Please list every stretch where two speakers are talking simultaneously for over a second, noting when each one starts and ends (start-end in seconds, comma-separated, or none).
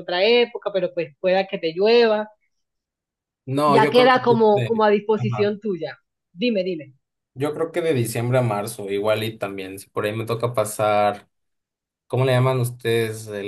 3.7-5.5